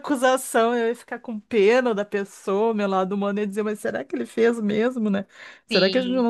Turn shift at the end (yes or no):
no